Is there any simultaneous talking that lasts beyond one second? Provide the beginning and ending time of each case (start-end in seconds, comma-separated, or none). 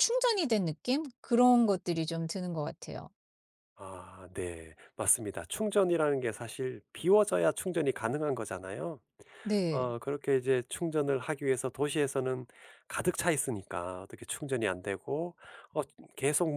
none